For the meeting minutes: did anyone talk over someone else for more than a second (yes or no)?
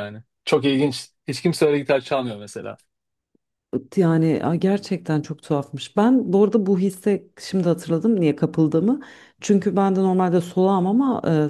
no